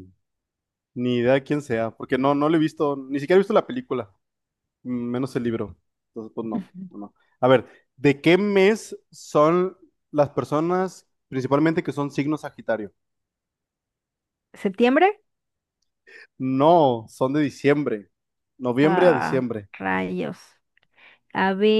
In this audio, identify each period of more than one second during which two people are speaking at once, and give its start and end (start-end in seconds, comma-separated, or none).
none